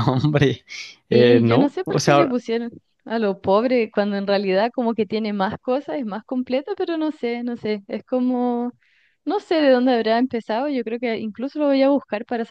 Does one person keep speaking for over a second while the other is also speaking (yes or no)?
yes